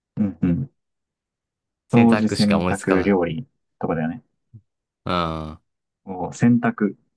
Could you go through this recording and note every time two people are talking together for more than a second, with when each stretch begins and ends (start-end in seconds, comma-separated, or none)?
1.9-3.2